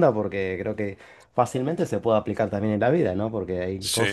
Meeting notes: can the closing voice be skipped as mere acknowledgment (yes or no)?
yes